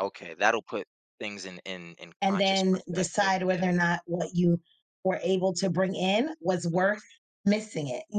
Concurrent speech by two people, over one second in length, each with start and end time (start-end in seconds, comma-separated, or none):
2.2-3.7